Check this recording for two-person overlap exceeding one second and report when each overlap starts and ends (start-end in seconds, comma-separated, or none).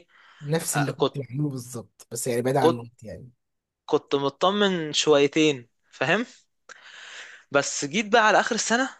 none